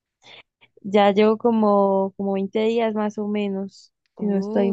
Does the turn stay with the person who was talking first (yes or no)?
no